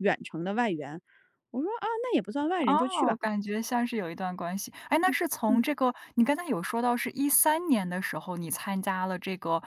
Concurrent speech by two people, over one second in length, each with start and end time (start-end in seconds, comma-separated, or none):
none